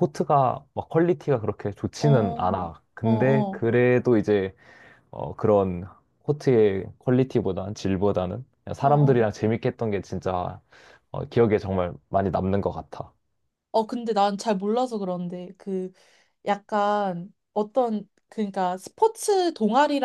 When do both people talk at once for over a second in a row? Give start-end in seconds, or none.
2.0-3.6